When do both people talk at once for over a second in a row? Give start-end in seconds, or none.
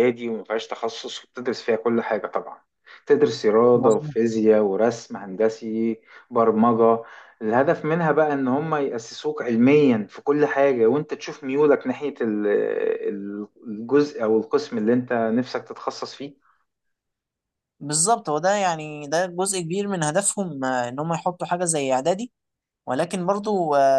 none